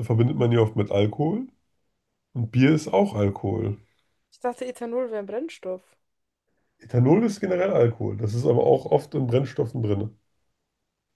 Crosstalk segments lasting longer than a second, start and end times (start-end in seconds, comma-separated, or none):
none